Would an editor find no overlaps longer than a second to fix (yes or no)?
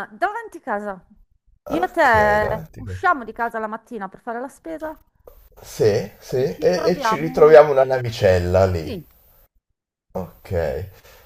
no